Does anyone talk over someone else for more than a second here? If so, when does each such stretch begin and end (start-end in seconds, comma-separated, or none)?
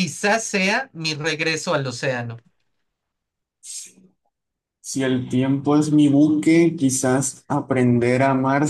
none